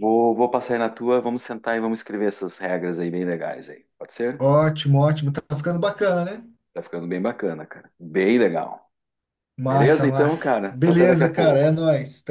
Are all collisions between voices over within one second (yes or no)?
no